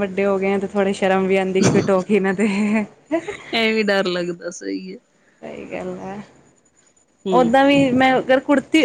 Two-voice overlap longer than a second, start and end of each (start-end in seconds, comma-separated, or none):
none